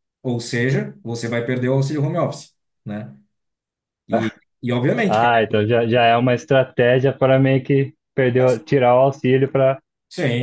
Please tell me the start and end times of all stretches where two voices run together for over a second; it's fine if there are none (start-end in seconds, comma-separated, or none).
none